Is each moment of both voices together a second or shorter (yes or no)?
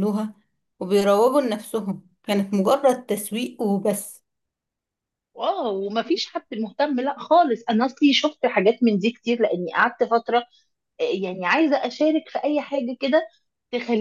yes